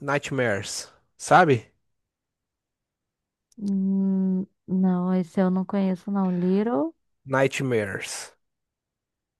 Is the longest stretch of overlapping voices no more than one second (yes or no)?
yes